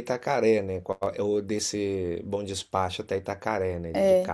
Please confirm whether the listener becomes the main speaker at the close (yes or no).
yes